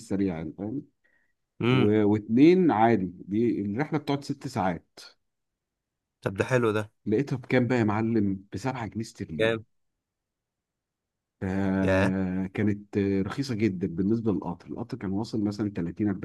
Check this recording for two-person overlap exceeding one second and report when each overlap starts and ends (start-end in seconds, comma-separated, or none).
none